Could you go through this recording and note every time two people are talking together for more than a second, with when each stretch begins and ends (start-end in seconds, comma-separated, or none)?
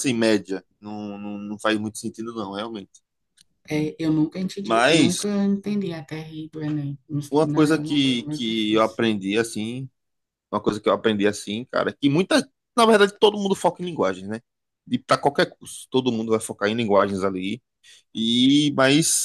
7.4-9.0